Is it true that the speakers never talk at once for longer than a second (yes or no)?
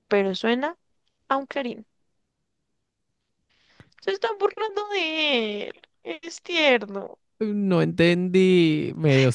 yes